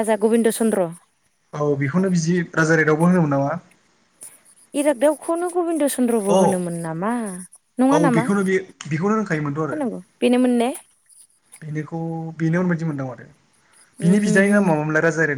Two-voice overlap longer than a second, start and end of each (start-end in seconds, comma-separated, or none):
none